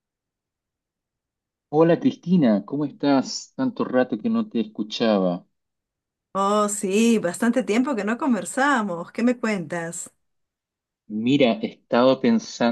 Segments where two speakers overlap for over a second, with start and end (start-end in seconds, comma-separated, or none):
none